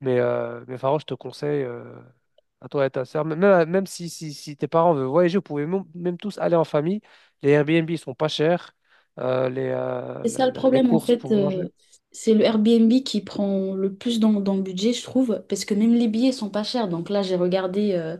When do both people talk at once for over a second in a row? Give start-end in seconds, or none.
10.2-11.6